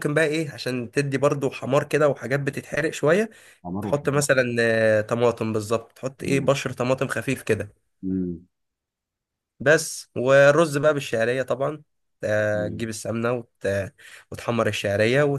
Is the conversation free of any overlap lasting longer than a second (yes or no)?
yes